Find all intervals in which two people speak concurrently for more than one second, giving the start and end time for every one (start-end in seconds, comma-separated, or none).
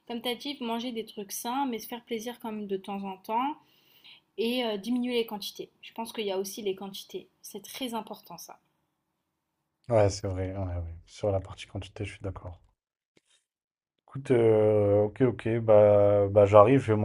none